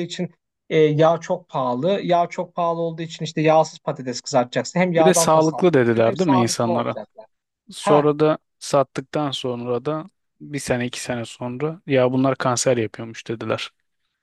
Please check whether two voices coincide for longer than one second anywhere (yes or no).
yes